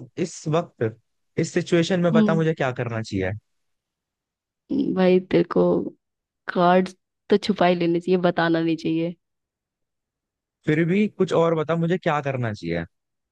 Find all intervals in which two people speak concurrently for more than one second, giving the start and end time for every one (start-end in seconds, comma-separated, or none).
none